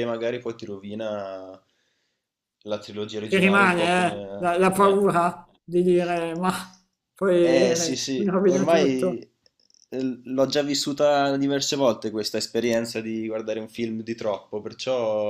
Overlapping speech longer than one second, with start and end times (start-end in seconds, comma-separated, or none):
3.3-5.0, 7.4-9.2